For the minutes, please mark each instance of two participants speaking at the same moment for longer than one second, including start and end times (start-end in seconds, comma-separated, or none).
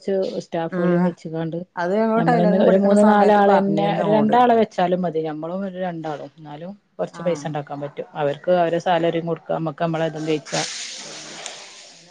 2.2-4.4